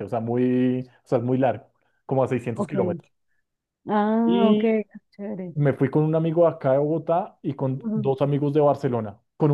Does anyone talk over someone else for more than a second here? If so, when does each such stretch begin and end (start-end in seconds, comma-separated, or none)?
none